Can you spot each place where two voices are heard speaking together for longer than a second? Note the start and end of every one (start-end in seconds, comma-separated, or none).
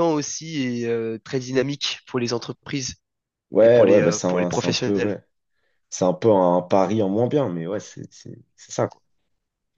3.6-5.1